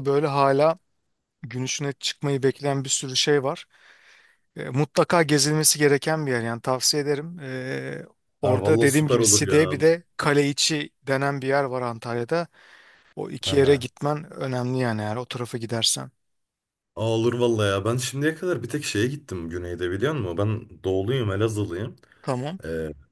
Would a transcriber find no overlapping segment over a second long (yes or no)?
no